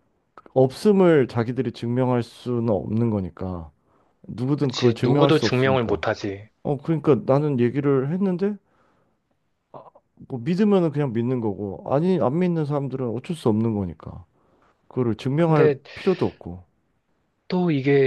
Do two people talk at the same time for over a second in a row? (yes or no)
yes